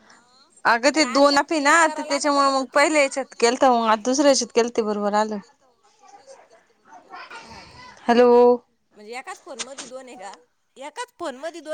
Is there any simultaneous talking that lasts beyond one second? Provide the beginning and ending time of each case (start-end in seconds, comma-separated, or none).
0.9-3.0